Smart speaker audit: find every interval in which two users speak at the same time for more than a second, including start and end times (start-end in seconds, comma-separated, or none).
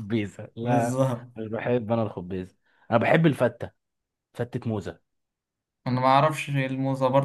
none